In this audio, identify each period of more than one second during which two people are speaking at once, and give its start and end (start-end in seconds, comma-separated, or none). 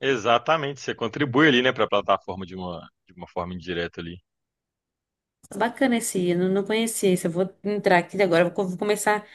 none